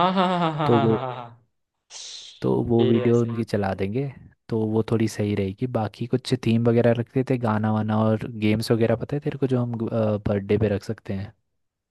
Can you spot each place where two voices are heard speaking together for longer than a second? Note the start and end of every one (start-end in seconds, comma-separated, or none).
none